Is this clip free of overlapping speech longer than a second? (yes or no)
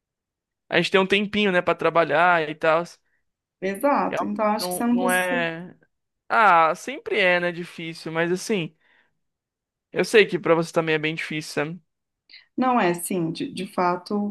no